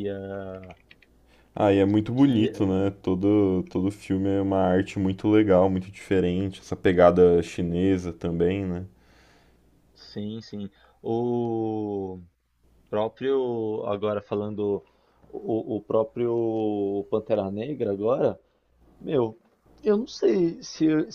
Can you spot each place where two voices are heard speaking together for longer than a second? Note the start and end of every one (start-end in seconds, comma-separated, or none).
none